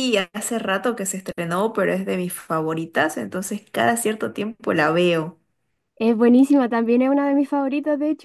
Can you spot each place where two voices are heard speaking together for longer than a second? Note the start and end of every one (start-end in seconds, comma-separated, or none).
none